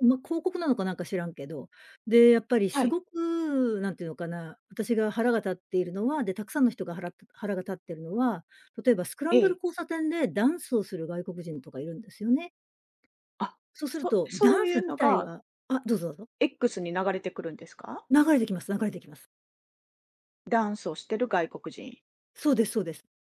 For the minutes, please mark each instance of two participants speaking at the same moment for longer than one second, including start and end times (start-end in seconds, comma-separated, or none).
13.7-15.3